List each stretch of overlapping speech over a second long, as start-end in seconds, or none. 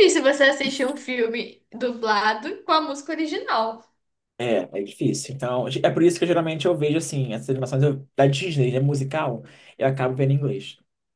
none